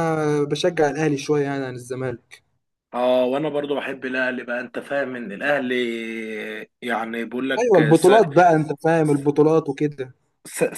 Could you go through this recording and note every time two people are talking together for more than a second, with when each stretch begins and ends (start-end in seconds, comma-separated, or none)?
none